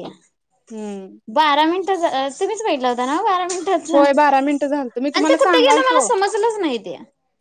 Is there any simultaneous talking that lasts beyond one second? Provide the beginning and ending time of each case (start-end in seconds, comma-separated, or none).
3.9-6.1